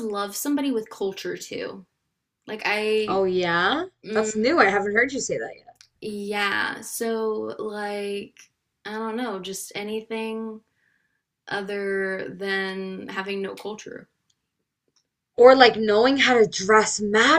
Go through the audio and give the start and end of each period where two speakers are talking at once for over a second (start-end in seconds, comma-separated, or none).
none